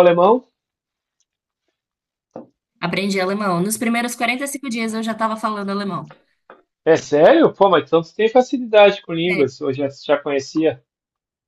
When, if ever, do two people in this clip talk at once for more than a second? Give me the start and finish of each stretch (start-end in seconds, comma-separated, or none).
none